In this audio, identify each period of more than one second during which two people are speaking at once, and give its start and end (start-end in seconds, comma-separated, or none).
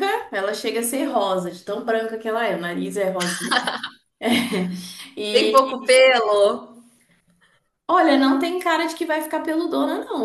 none